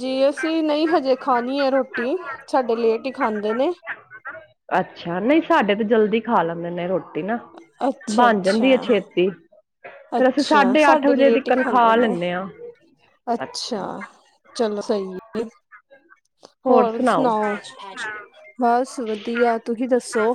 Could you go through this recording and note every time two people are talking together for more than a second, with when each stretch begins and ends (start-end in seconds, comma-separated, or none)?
10.2-12.1